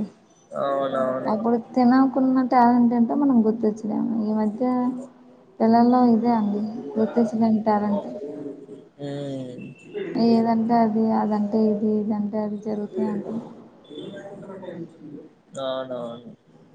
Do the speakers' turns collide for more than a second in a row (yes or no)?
no